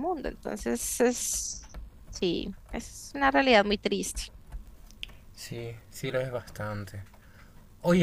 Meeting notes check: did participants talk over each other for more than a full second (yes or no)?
no